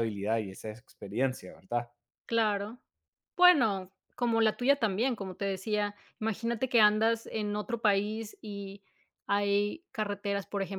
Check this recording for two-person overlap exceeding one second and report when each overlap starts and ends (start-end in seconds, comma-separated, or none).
none